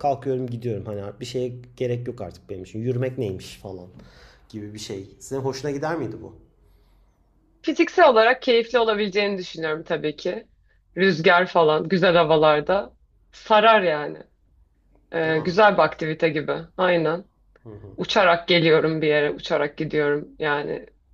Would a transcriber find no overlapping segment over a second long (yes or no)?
yes